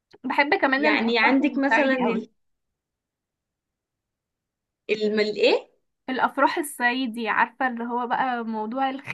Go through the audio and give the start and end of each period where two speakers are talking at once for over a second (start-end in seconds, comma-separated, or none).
0.8-2.3